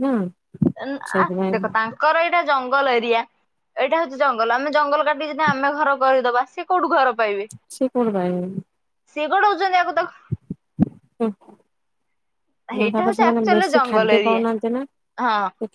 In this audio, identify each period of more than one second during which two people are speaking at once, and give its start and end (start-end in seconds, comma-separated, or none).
12.8-14.4